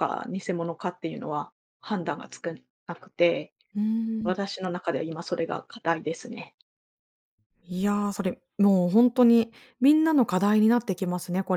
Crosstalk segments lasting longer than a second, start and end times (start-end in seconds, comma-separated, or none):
none